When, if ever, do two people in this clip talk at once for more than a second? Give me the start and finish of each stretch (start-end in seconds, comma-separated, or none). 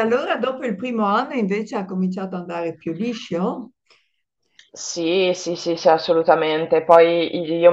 none